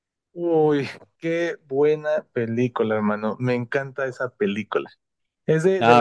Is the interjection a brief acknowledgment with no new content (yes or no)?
yes